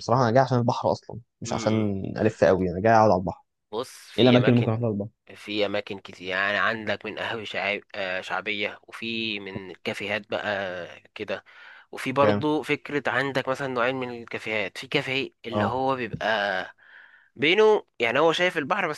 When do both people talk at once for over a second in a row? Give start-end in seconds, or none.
none